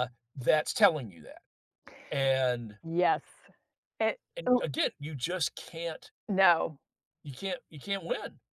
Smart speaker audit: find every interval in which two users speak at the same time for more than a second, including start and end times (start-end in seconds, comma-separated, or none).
none